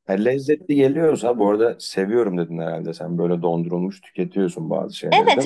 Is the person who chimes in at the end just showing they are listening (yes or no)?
no